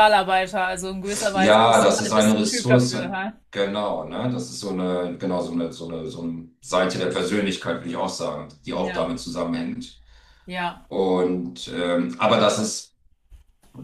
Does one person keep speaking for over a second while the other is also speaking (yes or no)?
yes